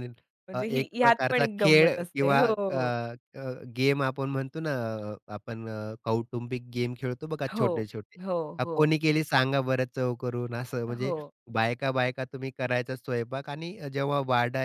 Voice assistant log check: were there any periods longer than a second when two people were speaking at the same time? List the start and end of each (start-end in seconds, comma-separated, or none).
0.5-2.8